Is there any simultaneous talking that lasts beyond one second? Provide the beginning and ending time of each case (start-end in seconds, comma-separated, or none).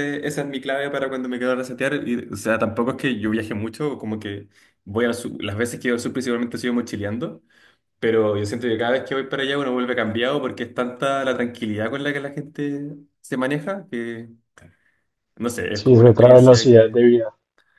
15.7-17.0